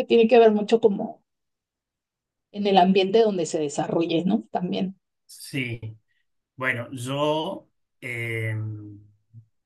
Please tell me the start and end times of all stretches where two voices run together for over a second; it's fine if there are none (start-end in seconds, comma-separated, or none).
none